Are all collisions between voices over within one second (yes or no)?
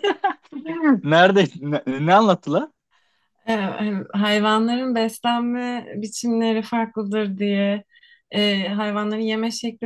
yes